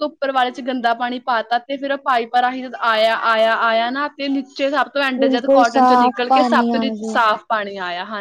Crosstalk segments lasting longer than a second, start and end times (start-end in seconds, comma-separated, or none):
5.2-7.2